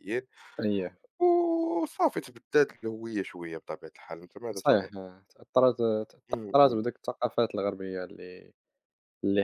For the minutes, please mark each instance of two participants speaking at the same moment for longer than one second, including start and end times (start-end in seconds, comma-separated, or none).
none